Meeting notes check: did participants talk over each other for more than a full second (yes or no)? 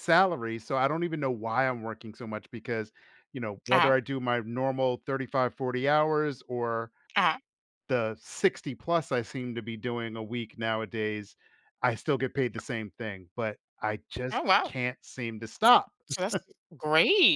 no